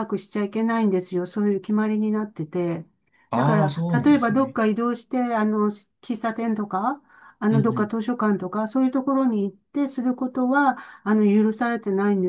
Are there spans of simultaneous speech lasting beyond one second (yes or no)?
yes